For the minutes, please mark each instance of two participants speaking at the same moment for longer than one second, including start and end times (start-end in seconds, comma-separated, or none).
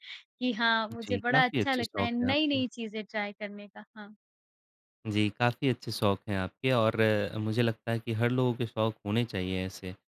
1.0-2.6